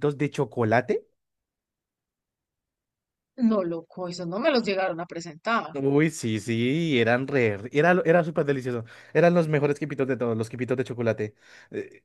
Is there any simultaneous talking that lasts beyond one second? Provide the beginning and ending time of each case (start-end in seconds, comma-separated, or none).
none